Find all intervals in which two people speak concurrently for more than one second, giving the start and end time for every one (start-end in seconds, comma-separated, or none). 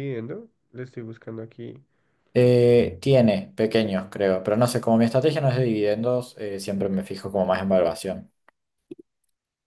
none